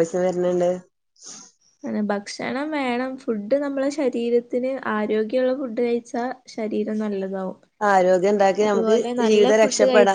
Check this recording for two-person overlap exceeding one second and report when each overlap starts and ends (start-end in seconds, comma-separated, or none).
none